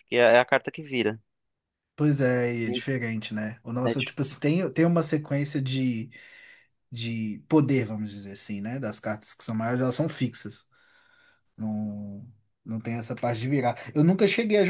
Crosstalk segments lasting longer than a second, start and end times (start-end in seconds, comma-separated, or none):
none